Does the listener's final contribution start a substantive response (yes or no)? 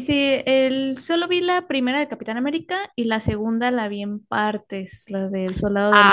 yes